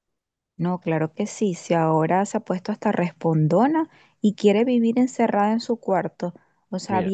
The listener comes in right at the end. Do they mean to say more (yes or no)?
no